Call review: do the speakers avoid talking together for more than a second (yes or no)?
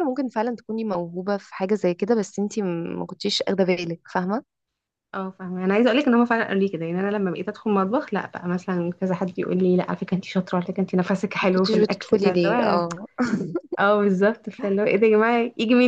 no